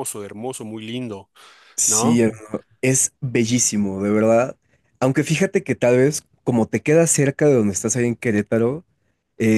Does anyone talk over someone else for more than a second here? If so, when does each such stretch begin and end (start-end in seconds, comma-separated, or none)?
none